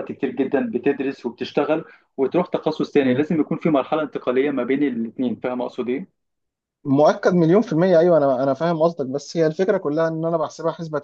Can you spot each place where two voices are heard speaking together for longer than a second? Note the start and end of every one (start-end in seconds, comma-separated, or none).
none